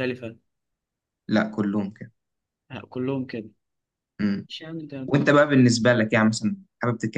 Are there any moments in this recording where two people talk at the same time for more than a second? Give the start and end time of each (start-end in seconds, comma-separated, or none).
none